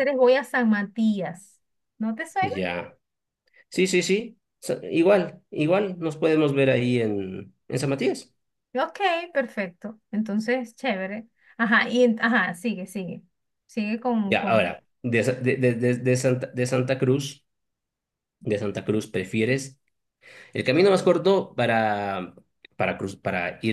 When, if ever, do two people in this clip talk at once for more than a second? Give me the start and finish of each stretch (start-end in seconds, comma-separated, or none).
none